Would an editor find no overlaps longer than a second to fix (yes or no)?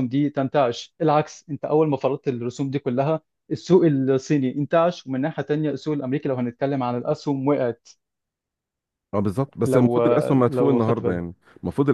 no